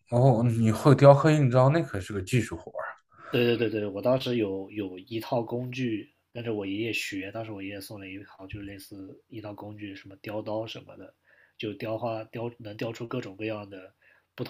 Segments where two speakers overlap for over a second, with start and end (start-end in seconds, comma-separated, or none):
none